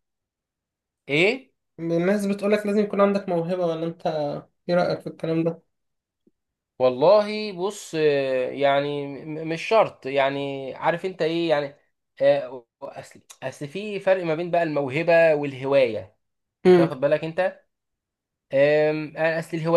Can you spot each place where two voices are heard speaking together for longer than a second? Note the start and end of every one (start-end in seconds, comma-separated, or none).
none